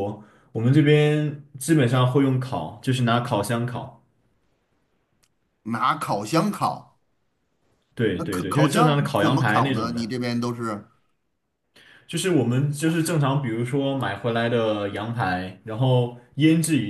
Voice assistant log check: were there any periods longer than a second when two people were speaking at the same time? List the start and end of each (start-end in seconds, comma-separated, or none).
8.1-10.2